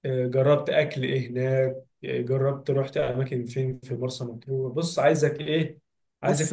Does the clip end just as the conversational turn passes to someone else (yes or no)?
no